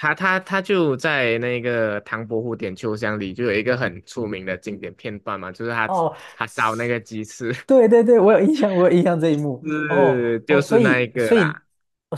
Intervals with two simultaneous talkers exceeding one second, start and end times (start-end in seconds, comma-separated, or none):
9.6-11.6